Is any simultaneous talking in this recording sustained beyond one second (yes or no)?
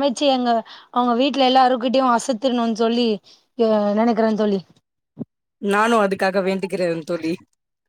no